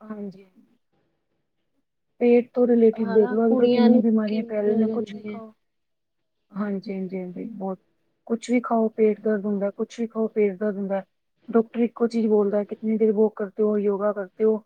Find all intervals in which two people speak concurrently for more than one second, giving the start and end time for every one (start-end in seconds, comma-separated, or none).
3.0-5.4